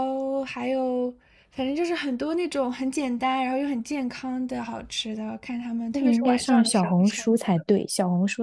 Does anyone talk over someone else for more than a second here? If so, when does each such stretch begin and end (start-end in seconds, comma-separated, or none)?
5.9-7.2